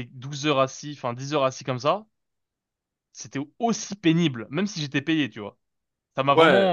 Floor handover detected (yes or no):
no